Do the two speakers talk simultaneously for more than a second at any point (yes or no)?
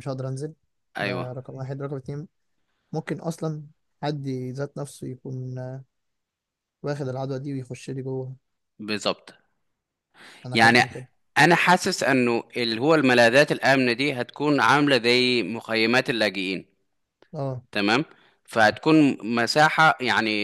no